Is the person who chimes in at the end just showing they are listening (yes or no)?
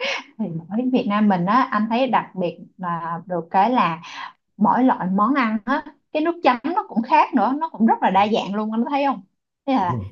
yes